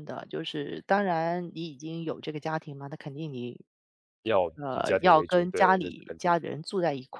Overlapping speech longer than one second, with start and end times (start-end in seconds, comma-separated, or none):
4.5-6.3